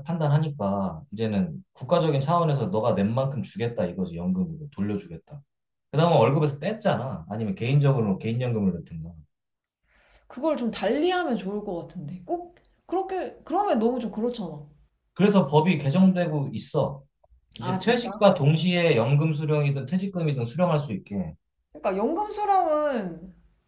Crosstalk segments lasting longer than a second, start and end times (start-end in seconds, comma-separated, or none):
none